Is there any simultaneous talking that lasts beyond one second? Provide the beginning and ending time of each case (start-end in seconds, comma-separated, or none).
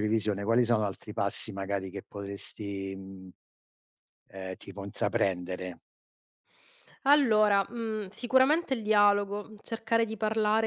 none